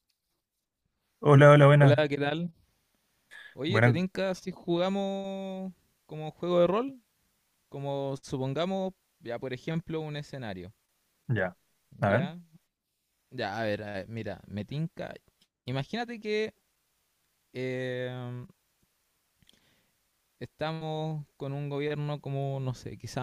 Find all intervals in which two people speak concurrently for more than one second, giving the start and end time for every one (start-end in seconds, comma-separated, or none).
none